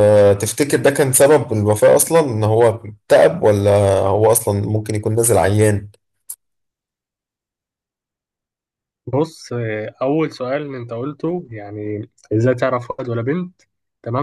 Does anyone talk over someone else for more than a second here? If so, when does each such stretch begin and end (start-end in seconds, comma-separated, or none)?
none